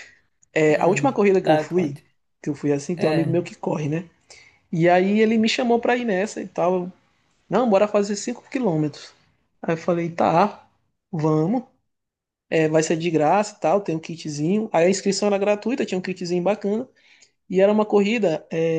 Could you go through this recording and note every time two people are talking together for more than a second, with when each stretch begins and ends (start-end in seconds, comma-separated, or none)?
0.7-2.0